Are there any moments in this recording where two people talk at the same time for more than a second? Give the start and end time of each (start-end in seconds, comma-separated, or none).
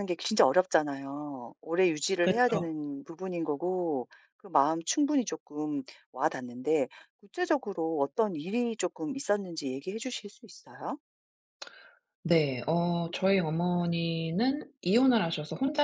none